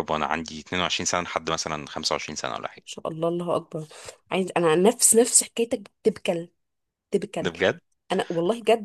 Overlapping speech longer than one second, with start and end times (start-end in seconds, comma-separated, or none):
none